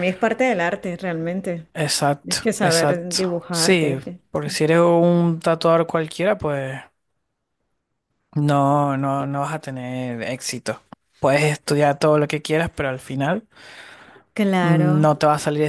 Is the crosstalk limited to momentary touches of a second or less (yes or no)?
no